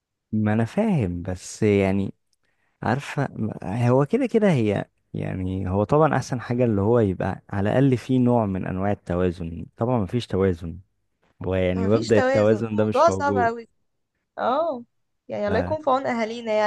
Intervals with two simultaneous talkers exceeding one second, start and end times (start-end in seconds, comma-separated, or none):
11.7-13.5